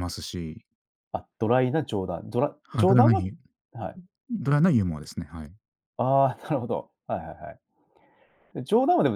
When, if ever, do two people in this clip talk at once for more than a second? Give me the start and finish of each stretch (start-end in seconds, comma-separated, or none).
none